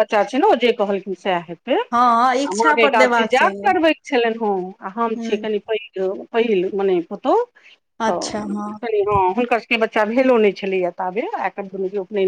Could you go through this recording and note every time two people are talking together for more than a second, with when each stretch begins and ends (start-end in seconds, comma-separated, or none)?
1.9-3.7